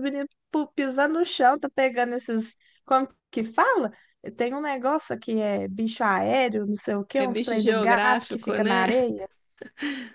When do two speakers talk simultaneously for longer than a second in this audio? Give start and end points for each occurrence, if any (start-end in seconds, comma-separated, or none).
7.2-8.9